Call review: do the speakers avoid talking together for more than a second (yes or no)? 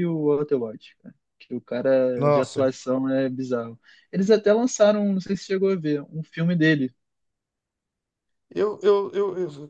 yes